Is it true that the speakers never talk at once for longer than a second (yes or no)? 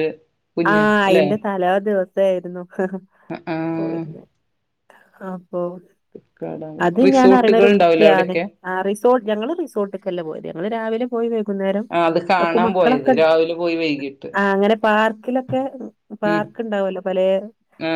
no